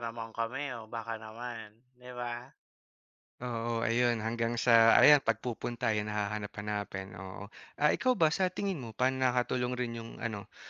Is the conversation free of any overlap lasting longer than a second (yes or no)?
yes